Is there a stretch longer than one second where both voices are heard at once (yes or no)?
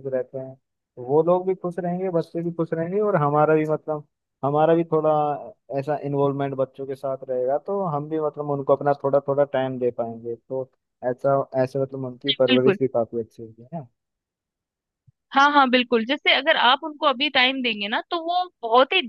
no